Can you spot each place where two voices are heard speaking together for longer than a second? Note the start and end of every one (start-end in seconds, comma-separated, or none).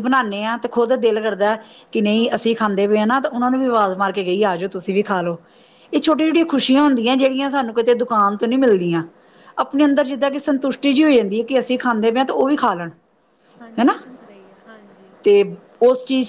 none